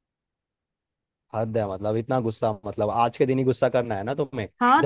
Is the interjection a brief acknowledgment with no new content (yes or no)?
no